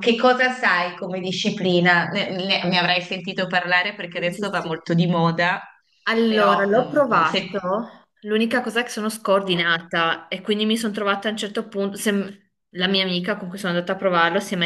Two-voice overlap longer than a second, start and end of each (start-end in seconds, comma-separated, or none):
6.3-7.6